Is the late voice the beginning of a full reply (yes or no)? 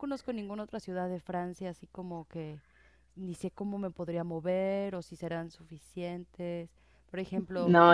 no